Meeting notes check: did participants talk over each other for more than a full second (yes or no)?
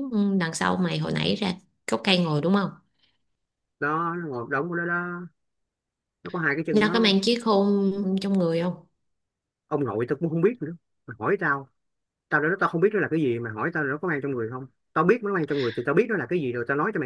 no